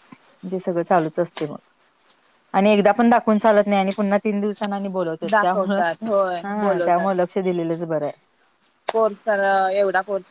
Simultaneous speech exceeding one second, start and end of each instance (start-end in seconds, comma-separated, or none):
5.3-7.1